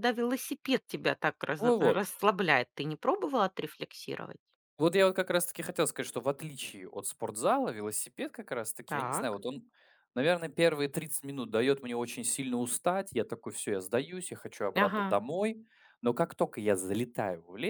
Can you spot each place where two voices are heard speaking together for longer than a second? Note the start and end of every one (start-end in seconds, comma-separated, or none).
none